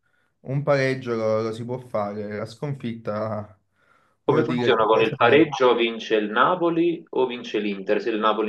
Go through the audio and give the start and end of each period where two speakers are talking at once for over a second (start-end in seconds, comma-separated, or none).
4.2-5.5